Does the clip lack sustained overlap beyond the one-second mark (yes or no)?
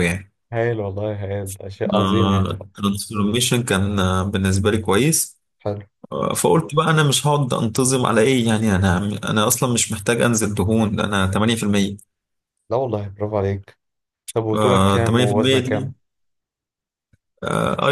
no